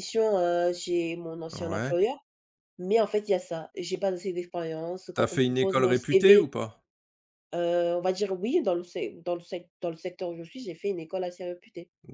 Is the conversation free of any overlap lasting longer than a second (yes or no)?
no